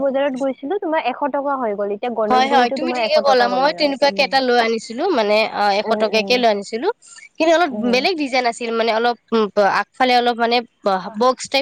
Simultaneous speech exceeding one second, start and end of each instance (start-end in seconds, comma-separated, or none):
none